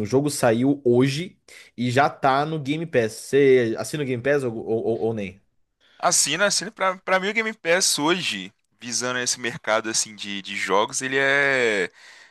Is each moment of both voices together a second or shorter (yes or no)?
yes